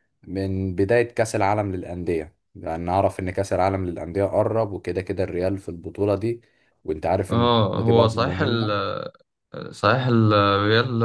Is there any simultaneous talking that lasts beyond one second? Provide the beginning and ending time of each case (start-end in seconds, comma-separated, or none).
7.3-8.7